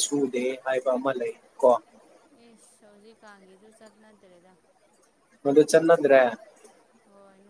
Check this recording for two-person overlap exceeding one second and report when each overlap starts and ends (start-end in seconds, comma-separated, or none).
none